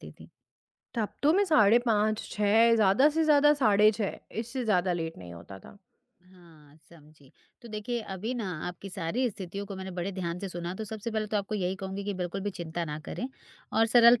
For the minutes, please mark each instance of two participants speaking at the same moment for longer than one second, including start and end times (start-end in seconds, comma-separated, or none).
none